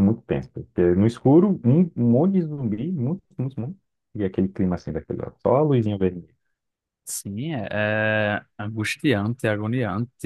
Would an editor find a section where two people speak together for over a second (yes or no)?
no